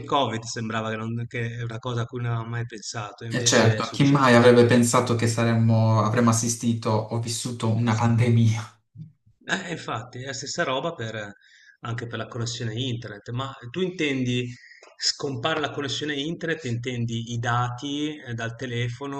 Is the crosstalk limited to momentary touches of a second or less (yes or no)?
no